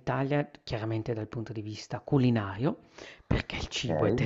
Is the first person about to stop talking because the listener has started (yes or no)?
no